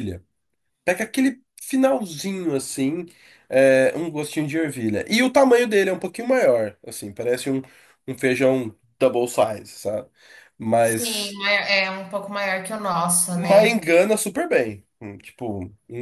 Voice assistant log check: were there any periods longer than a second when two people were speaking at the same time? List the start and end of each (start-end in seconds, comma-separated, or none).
none